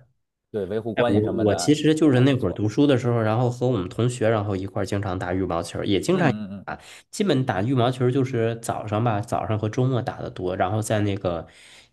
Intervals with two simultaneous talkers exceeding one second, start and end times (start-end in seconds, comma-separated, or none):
0.9-2.6